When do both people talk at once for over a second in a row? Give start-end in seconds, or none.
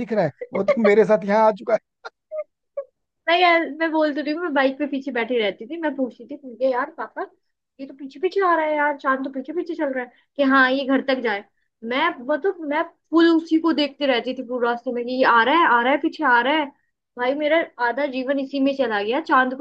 none